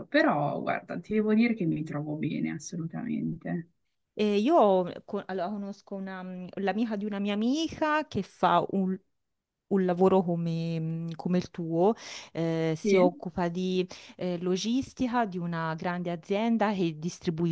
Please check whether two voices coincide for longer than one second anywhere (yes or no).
no